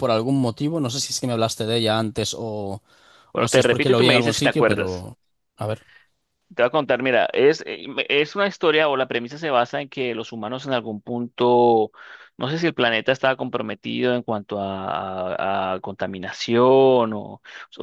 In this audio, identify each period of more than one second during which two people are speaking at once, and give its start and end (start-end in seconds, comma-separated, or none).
3.3-5.1